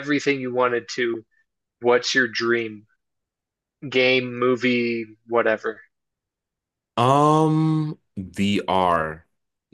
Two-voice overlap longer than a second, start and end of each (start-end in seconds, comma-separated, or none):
none